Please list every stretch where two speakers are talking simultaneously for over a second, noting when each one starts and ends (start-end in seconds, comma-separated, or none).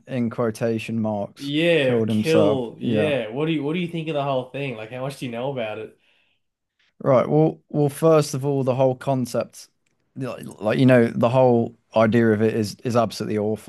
1.4-3.1